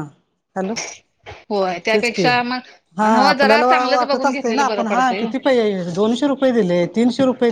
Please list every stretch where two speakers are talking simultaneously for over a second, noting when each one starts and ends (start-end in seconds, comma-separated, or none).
3.0-5.3